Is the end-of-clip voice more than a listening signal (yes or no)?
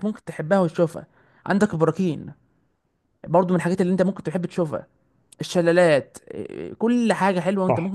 yes